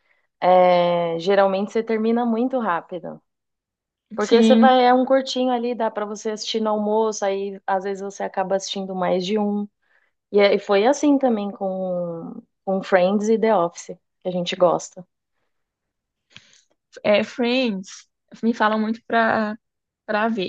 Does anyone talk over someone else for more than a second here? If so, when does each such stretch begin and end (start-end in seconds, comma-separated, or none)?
none